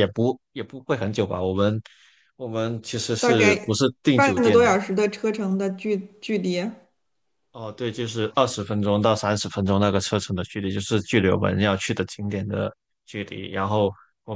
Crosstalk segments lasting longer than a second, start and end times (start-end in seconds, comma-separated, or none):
3.2-4.7